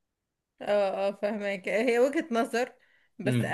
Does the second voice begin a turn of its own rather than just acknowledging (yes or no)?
no